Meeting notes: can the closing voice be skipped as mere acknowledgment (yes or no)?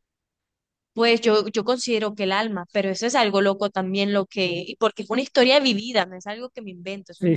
no